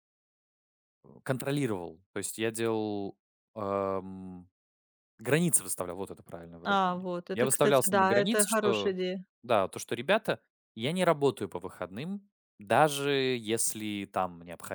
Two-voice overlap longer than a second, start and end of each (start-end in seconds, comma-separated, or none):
6.7-8.9